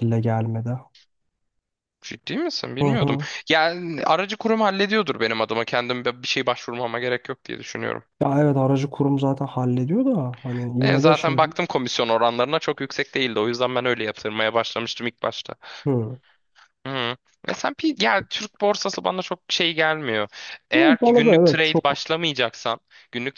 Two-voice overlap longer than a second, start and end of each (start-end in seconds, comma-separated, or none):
20.8-22.0